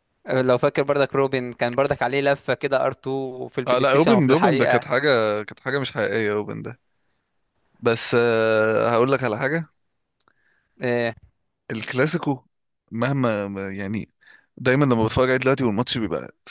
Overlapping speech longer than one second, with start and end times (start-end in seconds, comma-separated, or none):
3.7-4.9